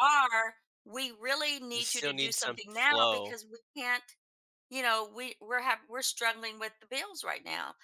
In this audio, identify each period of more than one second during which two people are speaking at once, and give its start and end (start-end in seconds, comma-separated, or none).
1.7-3.4